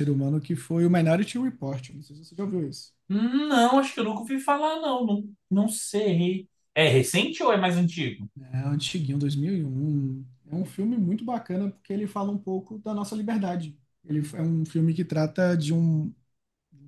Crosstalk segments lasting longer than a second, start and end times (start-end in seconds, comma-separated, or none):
none